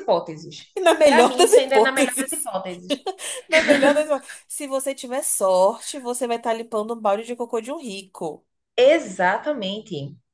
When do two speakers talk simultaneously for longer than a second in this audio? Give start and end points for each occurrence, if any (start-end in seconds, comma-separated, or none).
0.8-2.5